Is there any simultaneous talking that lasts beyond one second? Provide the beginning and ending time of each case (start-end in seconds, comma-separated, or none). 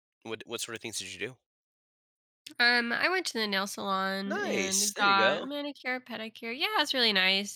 4.2-5.5